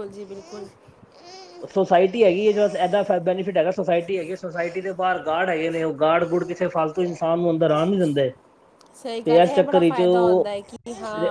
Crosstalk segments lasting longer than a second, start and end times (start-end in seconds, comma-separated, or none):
9.2-10.5